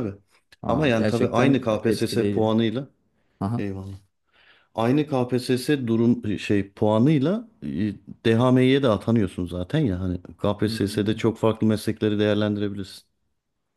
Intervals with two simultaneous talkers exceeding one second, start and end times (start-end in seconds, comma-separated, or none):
0.7-2.5